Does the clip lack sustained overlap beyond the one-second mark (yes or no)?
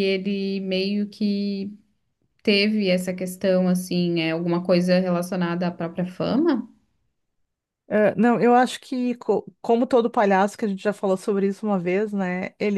yes